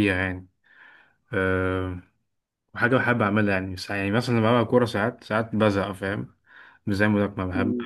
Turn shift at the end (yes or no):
yes